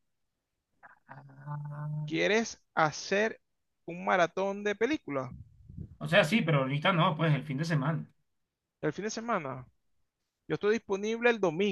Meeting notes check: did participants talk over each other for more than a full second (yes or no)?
no